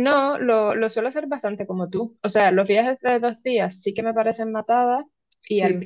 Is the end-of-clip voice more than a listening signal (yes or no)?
no